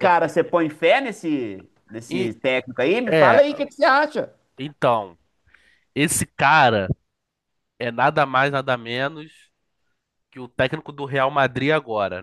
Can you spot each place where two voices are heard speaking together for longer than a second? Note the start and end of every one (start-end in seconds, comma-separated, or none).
none